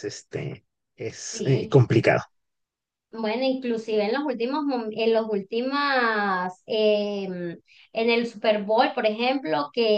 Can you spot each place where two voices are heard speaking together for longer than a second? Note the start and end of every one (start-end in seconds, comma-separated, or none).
none